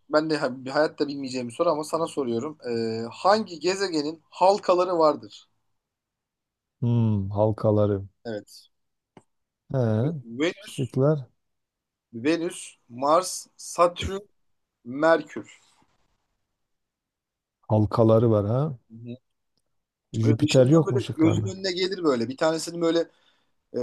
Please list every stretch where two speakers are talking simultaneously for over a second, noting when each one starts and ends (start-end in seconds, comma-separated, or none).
20.2-21.5